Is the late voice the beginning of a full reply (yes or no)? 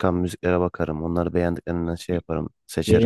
yes